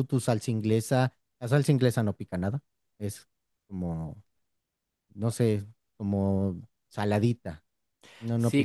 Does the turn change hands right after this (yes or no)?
yes